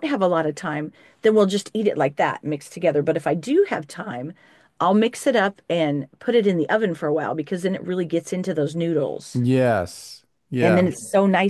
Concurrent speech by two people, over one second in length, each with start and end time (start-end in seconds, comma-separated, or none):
none